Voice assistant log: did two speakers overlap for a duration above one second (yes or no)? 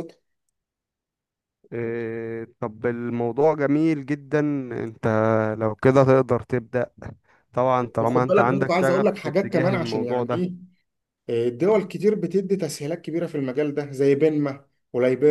yes